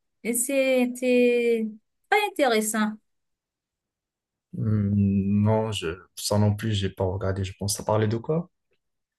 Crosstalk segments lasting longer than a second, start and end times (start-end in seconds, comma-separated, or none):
none